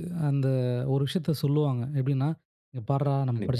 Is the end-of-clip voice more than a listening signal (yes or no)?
no